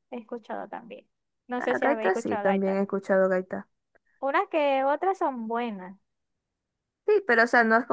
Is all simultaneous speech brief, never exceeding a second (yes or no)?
no